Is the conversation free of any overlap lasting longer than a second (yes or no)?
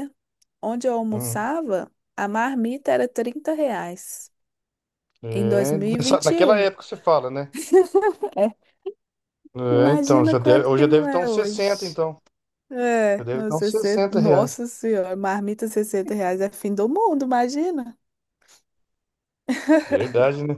no